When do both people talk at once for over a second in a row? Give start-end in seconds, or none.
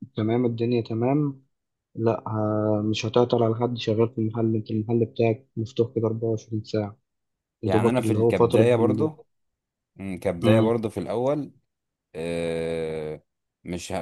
7.7-9.1